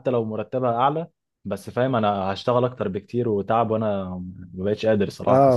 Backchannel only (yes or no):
no